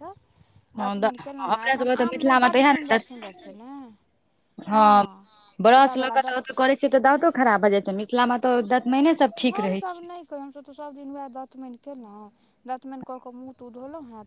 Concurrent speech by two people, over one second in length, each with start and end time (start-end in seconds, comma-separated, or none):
0.8-3.0